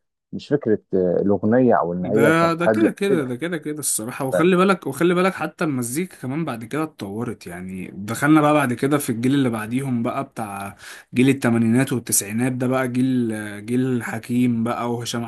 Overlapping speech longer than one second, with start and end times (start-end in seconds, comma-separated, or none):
2.0-3.3